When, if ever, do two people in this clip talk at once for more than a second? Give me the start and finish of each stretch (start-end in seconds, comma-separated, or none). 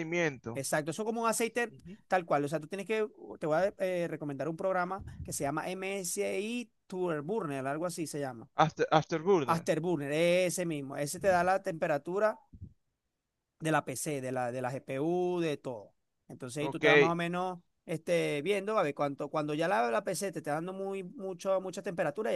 none